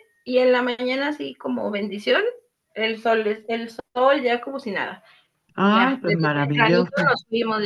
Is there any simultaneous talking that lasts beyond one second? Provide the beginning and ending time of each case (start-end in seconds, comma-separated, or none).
5.6-7.1